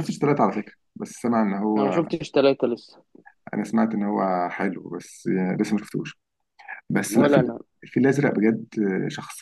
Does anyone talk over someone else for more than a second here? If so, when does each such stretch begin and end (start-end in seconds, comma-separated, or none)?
none